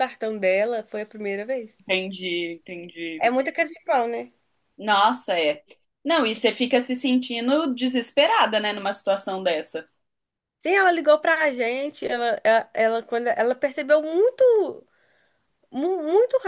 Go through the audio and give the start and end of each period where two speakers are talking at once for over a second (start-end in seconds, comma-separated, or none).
none